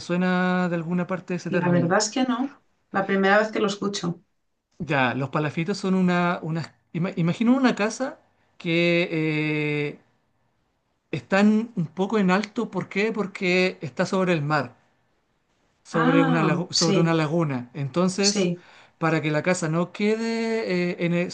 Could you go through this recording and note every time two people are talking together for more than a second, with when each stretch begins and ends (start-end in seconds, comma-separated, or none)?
15.9-17.2